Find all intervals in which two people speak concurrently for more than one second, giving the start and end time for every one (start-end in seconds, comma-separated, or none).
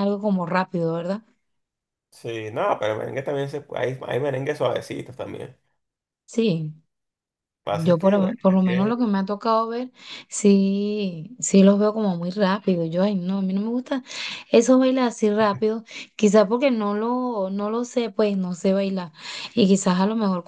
7.8-9.1